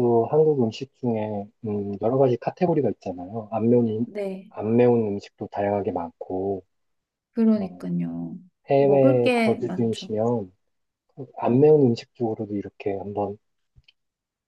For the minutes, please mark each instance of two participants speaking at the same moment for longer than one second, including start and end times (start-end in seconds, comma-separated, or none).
8.8-10.1